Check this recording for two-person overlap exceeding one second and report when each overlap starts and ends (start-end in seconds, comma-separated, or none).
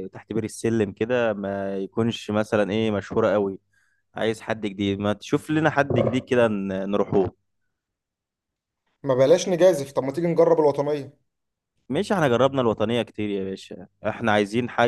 none